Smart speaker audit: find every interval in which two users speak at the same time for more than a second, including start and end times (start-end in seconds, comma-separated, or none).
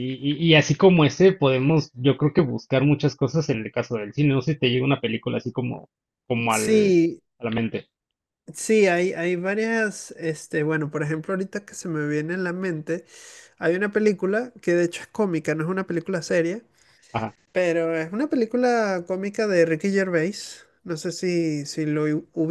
none